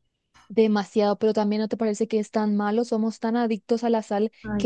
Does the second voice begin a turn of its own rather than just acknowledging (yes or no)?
no